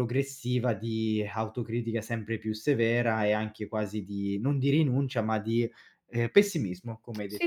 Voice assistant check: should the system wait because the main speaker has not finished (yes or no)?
no